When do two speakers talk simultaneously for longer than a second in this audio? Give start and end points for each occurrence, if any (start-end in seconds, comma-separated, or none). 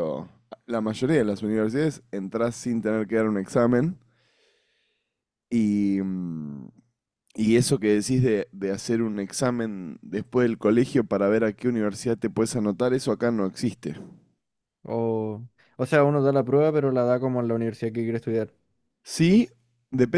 none